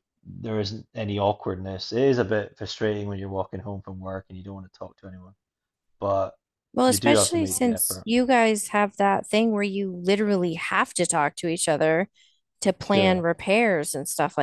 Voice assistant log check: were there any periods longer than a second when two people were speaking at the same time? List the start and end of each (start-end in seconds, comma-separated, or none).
6.9-8.1